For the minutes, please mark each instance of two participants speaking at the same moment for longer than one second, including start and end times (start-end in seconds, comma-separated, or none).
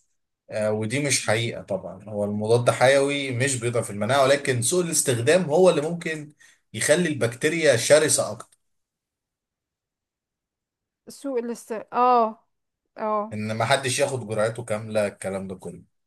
none